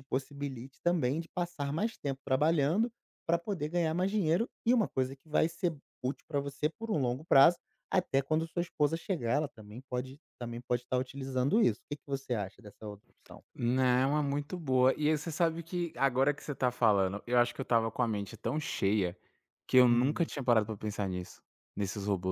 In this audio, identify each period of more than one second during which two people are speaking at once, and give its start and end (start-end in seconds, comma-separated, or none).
none